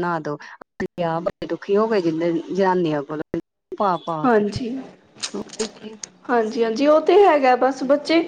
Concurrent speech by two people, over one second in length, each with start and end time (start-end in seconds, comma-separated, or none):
none